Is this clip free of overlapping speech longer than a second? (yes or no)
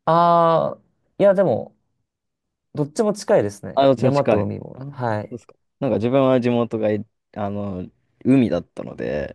no